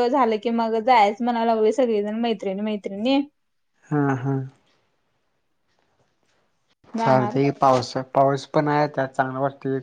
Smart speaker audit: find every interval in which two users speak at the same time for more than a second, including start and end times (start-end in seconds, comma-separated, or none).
none